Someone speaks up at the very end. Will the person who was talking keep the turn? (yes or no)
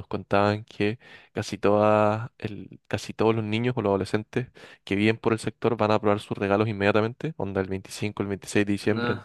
yes